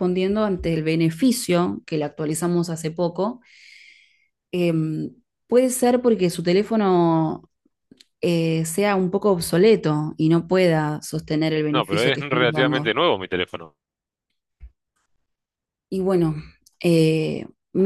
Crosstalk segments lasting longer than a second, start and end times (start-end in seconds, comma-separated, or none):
11.7-12.9